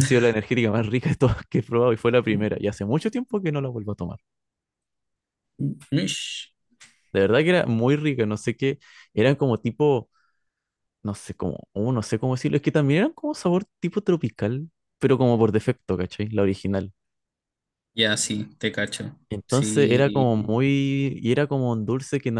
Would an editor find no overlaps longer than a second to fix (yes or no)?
no